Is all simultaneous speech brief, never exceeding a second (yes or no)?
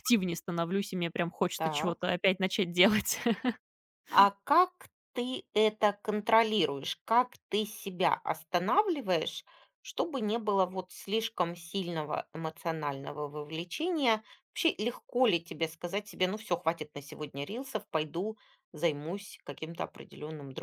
yes